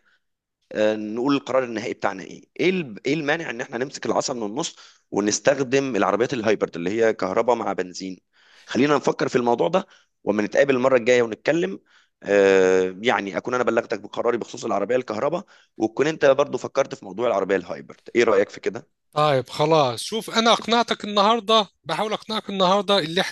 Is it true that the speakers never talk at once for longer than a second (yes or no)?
yes